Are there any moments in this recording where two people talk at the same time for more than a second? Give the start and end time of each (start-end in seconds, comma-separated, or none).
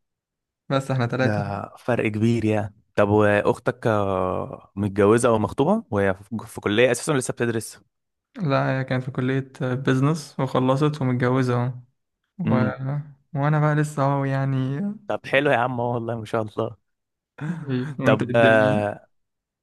none